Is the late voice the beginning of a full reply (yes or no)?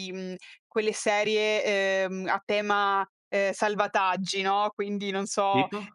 no